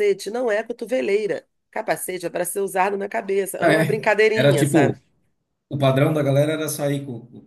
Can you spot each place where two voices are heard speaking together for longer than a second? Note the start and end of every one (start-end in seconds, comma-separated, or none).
3.6-5.0